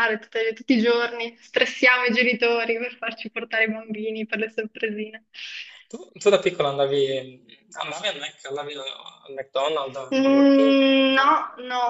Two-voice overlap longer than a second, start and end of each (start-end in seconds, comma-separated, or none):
10.1-11.4